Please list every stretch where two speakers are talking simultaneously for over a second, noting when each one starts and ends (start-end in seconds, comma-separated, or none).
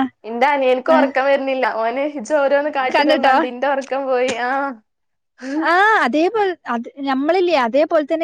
none